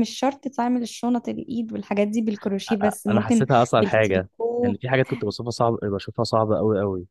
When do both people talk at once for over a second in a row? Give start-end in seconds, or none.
3.1-4.8